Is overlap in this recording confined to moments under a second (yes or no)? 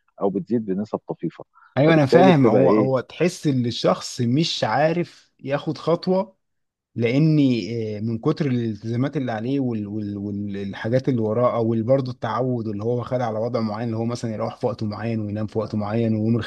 no